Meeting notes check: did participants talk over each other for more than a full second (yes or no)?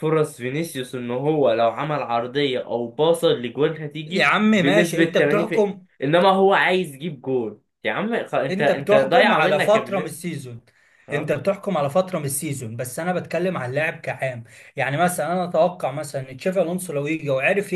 yes